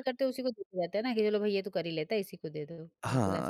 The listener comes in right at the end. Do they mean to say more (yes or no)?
yes